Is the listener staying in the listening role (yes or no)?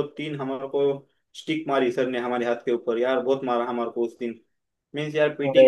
yes